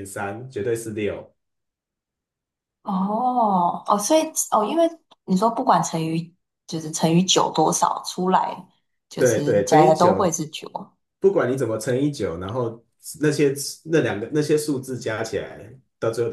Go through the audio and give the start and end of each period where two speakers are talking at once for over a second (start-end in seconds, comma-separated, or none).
9.2-10.4